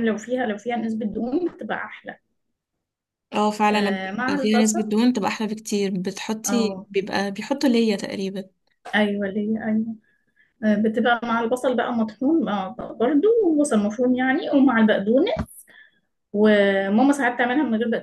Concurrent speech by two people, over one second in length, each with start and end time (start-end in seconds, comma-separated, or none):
3.7-5.0